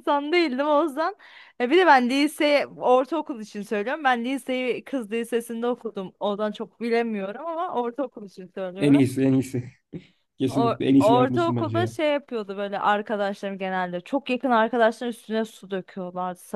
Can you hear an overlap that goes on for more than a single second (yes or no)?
yes